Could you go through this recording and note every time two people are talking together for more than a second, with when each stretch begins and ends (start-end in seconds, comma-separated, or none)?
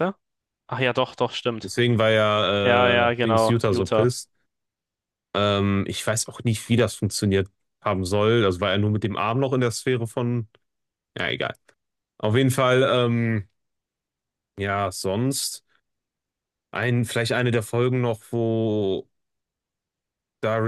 2.6-4.1